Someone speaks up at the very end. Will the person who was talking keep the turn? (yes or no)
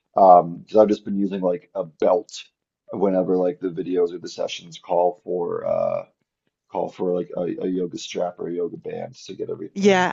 no